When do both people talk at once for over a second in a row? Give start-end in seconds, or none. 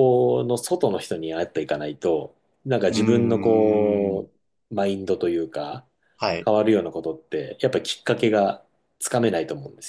2.9-4.3